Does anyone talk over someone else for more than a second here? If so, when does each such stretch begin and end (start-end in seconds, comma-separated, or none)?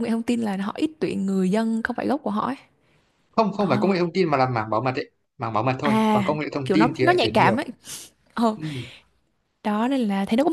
5.8-7.6